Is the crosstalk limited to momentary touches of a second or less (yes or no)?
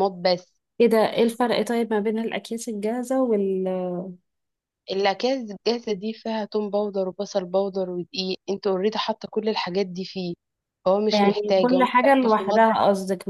no